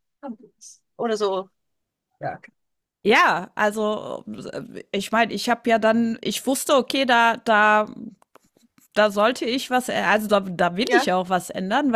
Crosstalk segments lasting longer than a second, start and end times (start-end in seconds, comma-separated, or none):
none